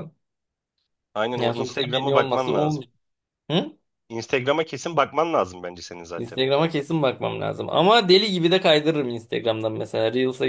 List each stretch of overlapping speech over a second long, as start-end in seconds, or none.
1.4-2.8